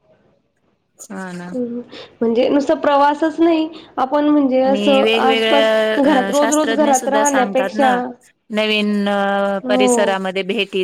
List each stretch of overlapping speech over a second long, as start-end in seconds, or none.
4.7-7.9